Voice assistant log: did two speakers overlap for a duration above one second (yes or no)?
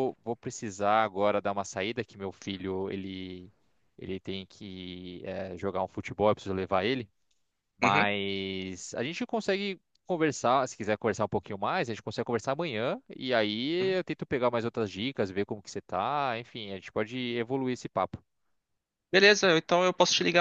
no